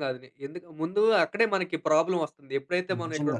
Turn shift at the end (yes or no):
no